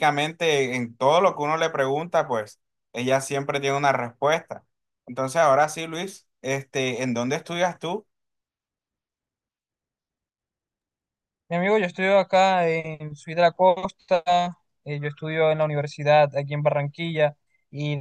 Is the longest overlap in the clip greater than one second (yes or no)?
no